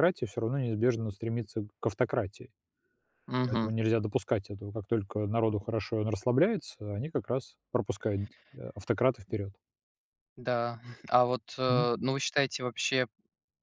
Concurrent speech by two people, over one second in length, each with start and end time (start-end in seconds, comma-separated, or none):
none